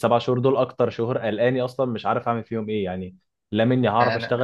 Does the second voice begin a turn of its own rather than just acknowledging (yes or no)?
no